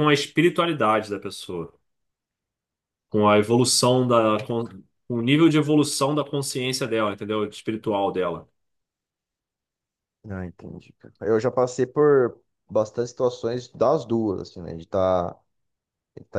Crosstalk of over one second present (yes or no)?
no